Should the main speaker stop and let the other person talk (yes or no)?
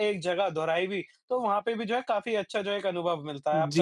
yes